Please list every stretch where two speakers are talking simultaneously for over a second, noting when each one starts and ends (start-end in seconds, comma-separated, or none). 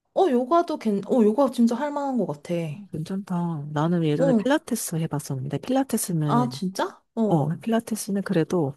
none